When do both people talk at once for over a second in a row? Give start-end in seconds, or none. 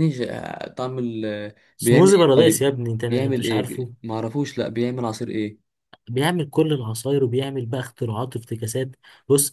1.8-3.9